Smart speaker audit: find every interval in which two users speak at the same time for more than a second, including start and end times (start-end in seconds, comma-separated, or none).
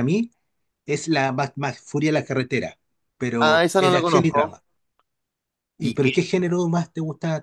3.4-4.6